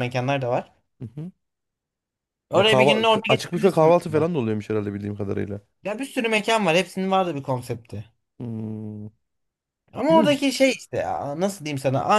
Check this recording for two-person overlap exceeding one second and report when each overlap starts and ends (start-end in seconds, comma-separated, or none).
2.5-4.3